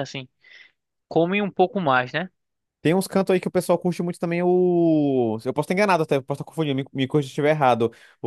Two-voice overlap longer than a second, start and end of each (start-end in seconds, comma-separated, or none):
none